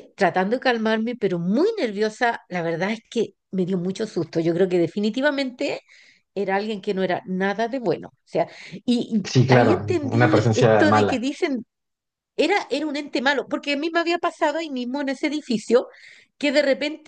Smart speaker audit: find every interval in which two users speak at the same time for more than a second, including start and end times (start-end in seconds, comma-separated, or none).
9.2-11.3